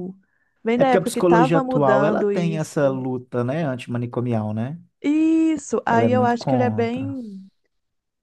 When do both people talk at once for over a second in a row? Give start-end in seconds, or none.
0.8-3.0, 5.8-7.2